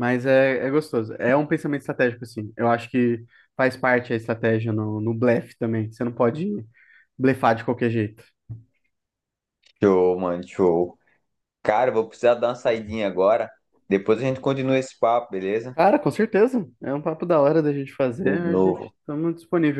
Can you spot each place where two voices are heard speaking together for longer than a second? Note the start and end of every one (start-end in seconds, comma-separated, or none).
none